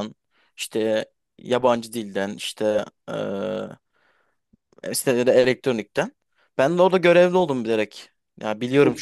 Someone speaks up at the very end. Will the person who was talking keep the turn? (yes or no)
yes